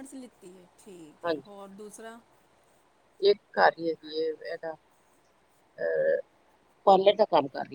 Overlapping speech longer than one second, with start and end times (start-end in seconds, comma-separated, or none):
none